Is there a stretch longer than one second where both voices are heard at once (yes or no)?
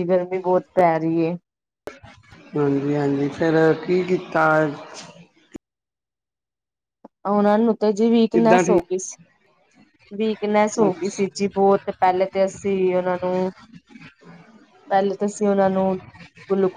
no